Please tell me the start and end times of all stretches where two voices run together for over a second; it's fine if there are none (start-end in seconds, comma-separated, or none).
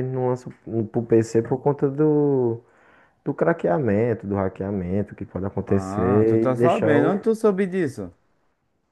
5.7-7.1